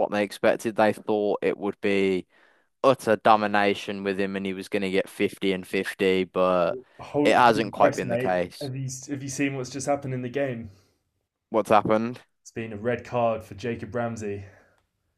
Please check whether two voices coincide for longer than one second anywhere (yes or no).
yes